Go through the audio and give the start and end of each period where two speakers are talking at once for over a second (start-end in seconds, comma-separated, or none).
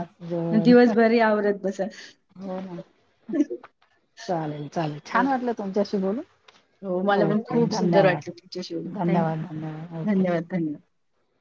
7.2-9.4